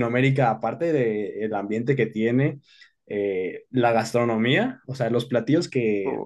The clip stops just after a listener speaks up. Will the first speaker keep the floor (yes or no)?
yes